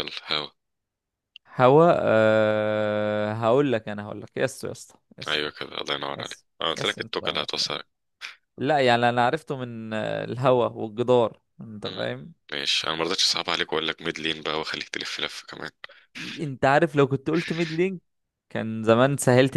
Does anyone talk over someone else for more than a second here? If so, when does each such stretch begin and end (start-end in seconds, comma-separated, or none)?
6.2-7.8